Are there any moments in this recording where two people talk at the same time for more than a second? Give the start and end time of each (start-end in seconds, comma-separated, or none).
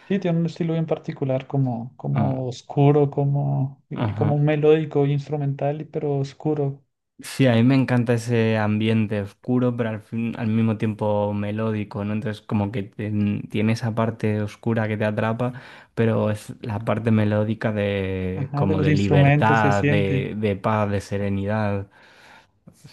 18.4-20.3